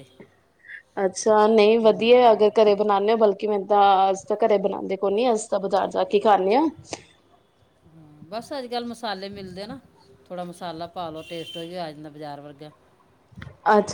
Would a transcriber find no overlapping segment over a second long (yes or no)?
yes